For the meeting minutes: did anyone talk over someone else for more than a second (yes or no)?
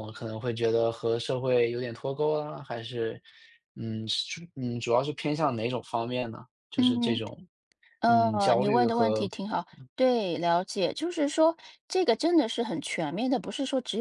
yes